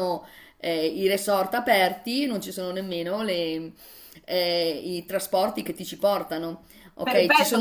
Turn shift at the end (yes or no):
yes